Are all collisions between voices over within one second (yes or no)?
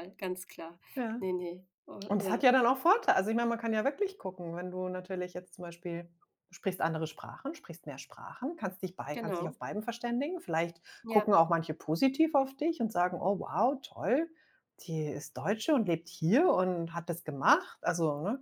yes